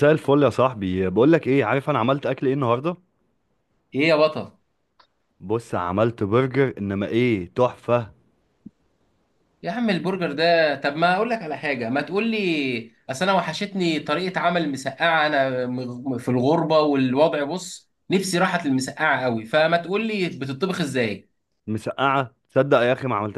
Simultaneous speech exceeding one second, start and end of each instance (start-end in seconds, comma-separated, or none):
none